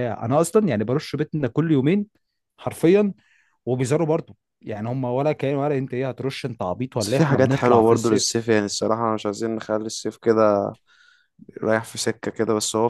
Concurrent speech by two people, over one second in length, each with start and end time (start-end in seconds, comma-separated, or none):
7.0-8.3